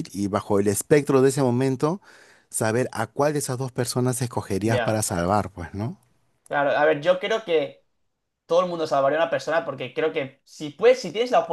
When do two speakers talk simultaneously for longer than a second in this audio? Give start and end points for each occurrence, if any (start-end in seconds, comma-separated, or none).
none